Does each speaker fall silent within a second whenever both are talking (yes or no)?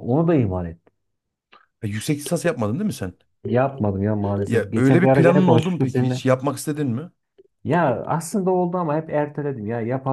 no